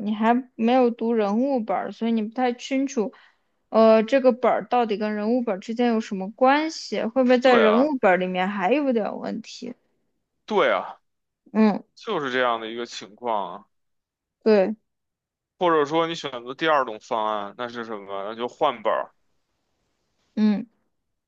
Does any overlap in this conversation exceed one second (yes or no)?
no